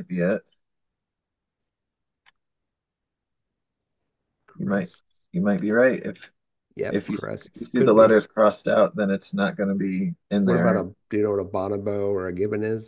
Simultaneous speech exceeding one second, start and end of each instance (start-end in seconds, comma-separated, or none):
6.9-8.2